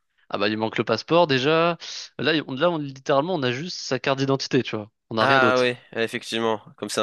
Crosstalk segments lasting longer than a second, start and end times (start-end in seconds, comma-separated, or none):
none